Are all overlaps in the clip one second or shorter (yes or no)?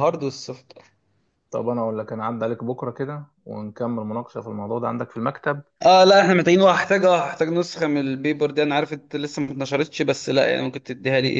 yes